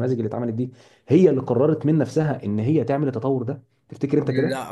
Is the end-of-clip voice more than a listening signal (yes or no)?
yes